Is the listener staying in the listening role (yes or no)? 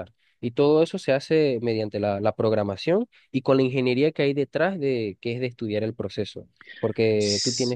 no